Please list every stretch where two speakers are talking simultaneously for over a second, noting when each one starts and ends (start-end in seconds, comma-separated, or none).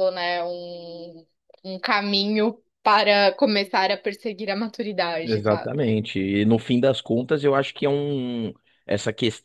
none